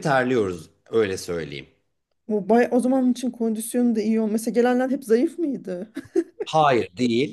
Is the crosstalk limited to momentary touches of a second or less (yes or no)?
yes